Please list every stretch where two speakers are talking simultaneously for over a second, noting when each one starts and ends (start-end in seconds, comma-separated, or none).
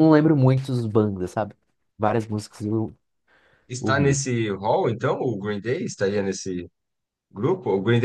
none